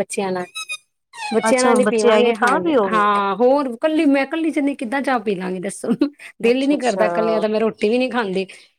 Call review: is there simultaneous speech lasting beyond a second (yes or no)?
yes